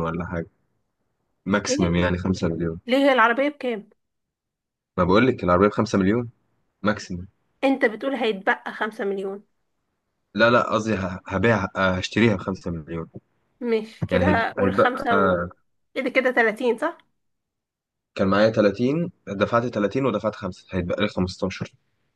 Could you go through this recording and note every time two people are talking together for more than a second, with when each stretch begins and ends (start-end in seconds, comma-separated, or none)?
14.1-15.4